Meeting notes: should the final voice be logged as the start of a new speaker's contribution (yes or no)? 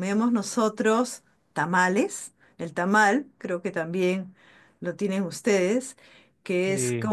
no